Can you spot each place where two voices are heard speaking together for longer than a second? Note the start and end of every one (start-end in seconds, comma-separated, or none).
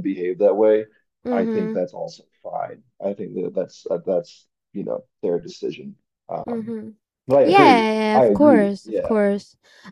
7.4-9.2